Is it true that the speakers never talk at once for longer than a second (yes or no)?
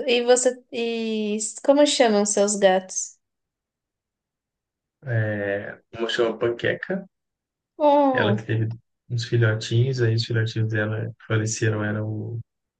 yes